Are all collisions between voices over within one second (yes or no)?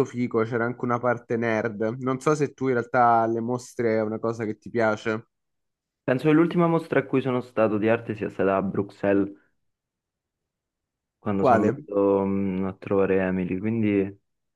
yes